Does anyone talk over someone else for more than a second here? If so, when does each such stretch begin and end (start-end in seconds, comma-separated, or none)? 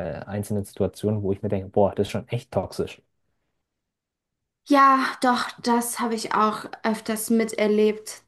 none